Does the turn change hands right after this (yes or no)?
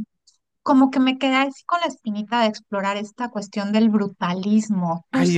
yes